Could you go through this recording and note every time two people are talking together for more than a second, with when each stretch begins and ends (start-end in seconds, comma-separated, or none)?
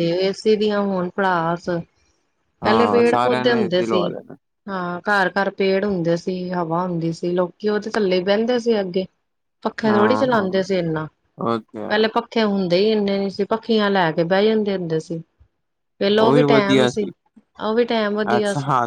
2.6-4.0